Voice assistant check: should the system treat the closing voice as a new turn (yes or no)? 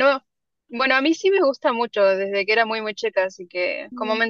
no